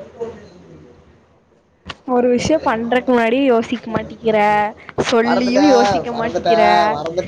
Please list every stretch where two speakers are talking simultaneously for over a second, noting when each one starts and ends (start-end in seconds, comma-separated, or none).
5.3-6.7